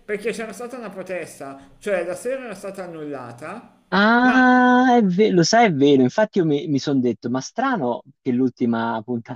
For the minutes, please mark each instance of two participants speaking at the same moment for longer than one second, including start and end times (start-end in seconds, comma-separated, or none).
none